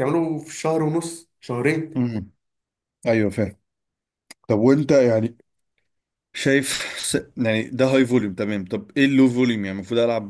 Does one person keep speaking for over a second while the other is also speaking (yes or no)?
no